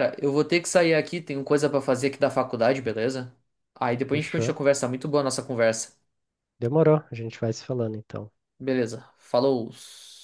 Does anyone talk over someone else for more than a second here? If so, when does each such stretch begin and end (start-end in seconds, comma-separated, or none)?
none